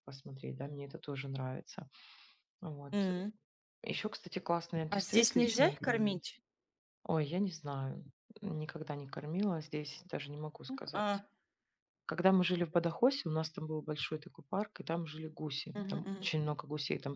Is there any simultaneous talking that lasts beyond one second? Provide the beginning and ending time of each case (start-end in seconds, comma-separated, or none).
4.9-6.2